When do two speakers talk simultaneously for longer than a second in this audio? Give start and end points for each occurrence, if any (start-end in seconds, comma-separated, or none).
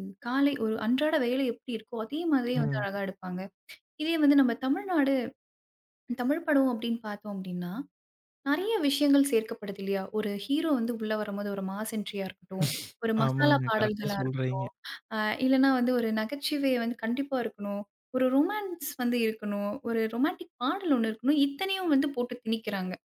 13.2-14.7